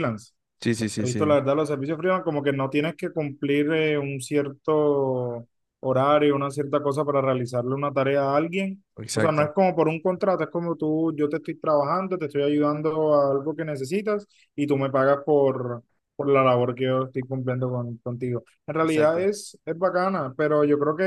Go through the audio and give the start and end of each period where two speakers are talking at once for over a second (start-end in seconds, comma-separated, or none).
none